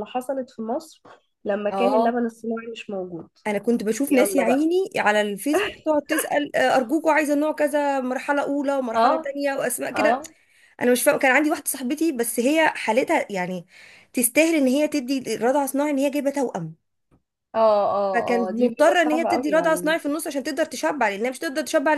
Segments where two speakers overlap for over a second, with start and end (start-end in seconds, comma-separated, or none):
18.1-19.9